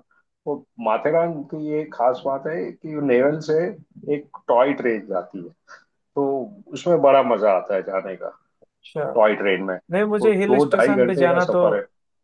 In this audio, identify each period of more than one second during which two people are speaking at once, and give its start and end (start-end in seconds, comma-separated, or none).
10.2-11.6